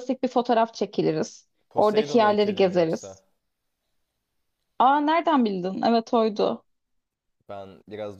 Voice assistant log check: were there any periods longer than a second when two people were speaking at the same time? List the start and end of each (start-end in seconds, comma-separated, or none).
1.8-3.1